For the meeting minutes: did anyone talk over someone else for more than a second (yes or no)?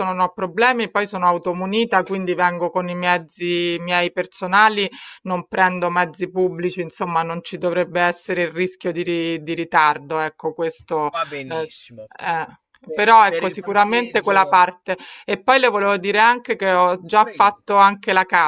yes